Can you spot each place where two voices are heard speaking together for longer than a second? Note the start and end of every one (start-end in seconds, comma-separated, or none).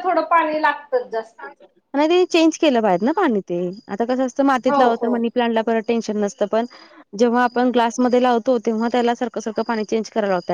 none